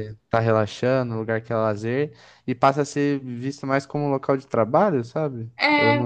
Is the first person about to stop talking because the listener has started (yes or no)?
yes